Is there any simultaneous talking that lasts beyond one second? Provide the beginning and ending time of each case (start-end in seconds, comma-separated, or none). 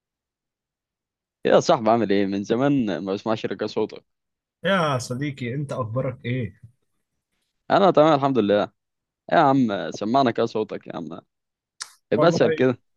none